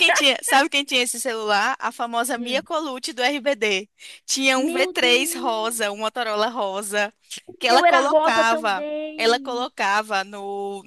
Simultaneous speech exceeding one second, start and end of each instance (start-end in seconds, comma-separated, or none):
4.5-6.0, 7.6-9.7